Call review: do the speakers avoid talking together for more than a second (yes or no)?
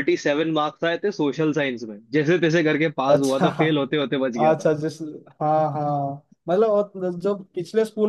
yes